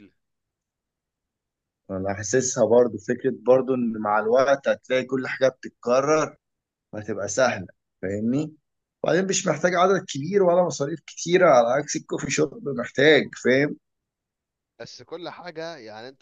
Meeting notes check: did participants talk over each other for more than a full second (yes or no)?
no